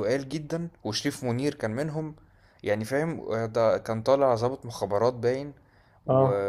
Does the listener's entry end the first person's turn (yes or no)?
no